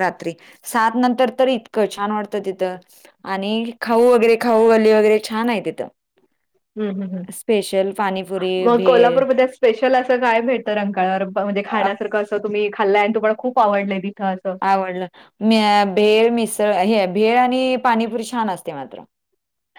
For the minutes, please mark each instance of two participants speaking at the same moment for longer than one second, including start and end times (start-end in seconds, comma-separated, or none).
none